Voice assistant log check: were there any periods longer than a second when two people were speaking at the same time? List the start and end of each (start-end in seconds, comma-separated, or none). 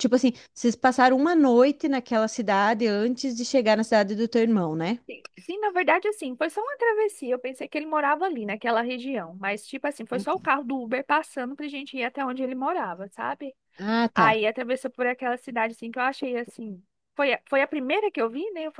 none